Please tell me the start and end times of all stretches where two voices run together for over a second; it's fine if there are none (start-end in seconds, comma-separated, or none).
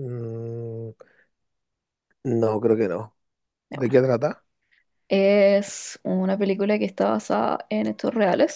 none